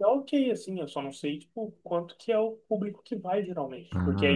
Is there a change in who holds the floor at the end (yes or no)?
yes